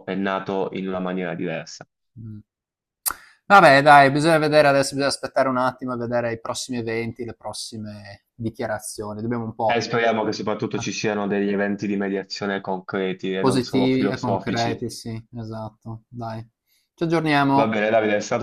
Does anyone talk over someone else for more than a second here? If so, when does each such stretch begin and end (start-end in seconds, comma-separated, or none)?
13.4-14.8